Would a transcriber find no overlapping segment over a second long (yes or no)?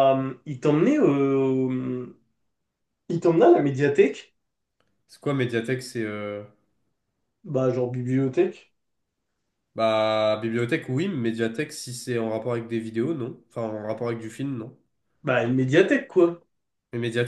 yes